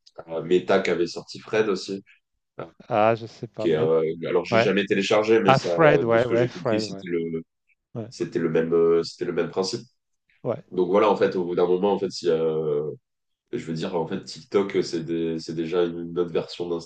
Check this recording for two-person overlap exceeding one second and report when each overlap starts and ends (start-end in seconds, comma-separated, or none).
5.5-7.0